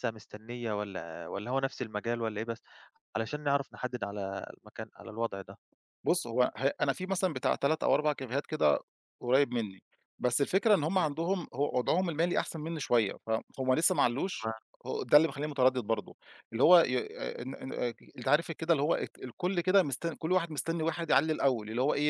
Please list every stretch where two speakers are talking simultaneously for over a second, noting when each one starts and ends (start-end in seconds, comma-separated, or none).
none